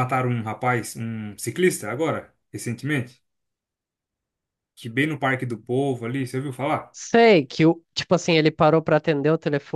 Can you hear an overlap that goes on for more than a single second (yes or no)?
no